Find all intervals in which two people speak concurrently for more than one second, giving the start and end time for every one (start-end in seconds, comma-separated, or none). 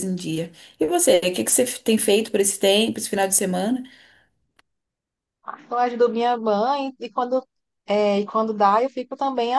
none